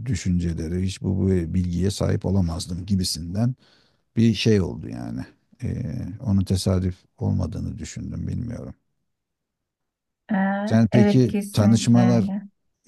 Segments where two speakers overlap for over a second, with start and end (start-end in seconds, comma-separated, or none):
10.9-12.3